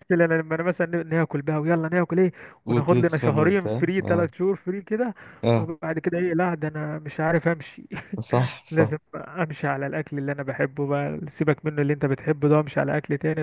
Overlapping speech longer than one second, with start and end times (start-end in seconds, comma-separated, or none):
2.7-4.3